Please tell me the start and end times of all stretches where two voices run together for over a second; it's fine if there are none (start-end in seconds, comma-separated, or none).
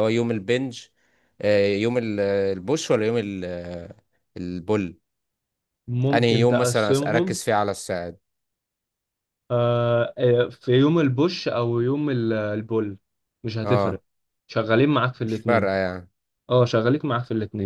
6.1-7.4